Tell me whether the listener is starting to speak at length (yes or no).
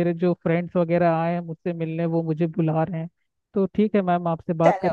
no